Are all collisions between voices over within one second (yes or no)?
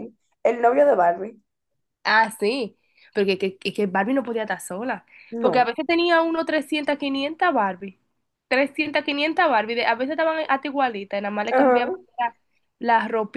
yes